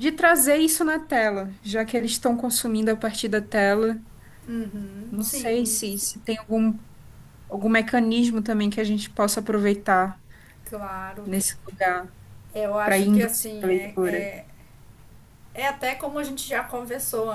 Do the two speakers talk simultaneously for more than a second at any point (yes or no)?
yes